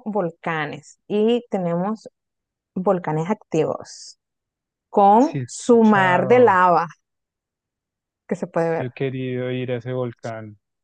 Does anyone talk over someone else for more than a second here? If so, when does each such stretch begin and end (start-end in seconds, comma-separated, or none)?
5.2-6.6